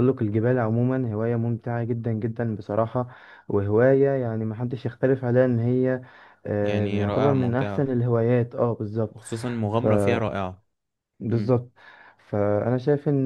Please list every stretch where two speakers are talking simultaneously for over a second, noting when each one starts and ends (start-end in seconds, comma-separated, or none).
6.6-7.9